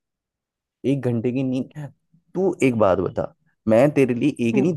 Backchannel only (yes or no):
yes